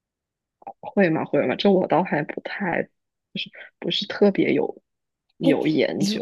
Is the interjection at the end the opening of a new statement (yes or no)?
yes